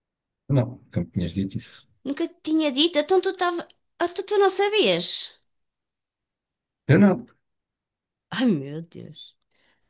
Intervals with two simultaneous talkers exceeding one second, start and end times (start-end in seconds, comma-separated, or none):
none